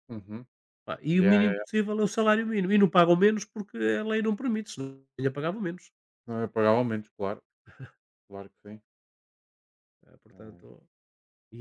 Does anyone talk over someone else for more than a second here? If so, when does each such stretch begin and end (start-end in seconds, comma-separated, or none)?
none